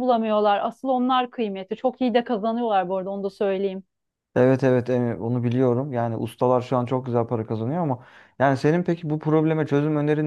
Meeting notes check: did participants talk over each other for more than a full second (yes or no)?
no